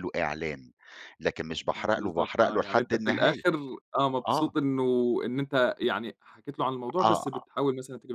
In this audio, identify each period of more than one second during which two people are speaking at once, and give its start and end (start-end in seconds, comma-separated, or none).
1.7-3.4